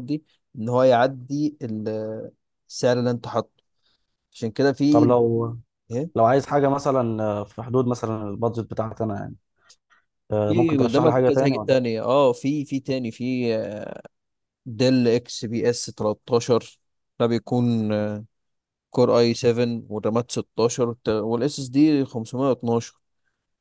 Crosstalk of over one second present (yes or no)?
yes